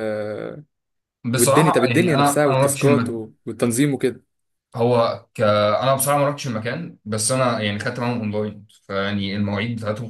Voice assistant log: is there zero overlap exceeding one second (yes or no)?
no